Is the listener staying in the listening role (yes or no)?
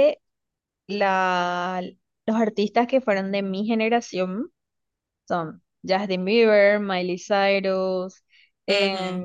yes